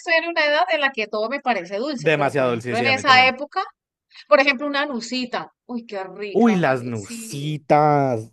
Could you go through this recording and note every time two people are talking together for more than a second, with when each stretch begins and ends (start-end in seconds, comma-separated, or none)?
2.0-3.4, 6.3-7.6